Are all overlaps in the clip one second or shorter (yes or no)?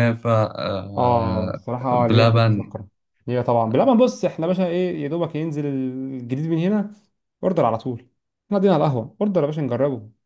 no